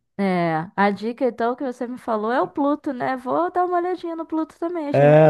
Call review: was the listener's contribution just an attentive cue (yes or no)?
no